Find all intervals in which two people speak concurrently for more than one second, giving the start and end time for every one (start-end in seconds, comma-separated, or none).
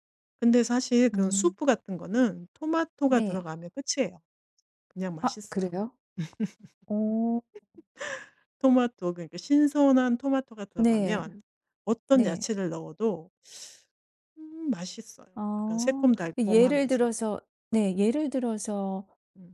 15.3-17.1